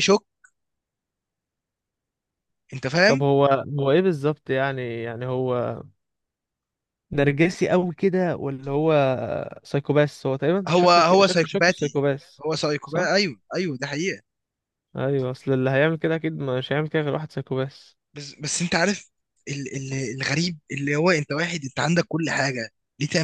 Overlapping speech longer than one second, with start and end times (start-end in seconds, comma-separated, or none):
10.7-12.0